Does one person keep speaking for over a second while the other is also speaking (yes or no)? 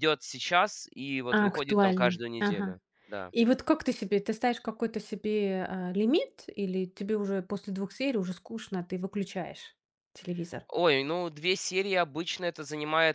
yes